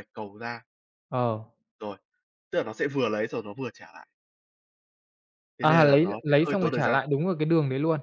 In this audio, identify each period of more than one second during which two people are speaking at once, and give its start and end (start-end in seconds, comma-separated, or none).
5.6-7.0